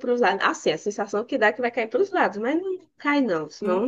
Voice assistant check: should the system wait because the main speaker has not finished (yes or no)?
no